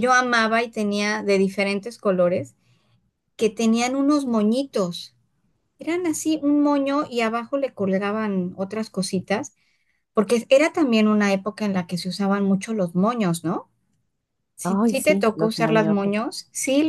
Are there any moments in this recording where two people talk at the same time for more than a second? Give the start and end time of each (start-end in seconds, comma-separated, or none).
14.6-16.1